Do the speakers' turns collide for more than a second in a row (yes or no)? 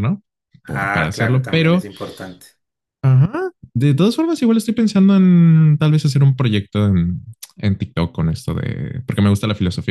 yes